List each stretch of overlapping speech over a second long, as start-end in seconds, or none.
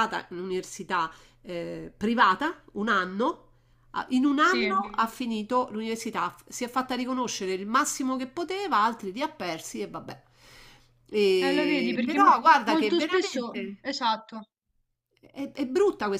11.5-13.8